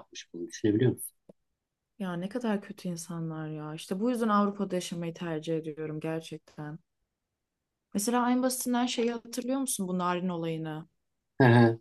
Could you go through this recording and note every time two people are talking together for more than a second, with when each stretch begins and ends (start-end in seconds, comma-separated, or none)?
none